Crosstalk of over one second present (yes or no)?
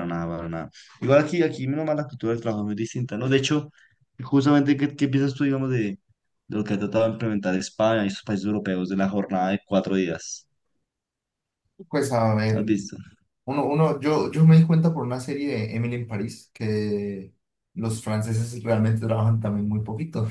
no